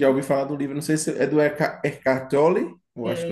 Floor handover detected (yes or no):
yes